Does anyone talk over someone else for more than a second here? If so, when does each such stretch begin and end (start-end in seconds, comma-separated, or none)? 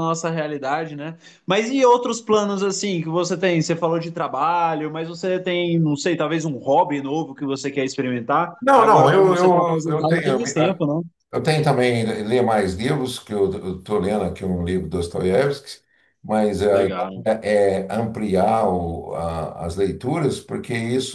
8.6-10.4